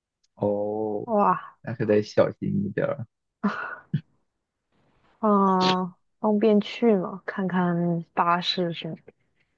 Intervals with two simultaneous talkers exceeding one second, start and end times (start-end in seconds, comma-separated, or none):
none